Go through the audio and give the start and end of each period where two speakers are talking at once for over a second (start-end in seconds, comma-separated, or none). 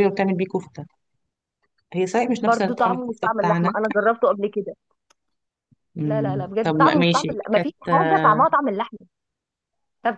2.4-3.7, 6.0-8.4